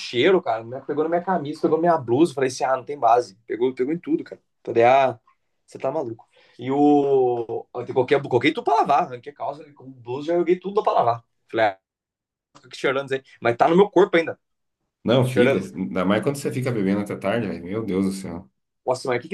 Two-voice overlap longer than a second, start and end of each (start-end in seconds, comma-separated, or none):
none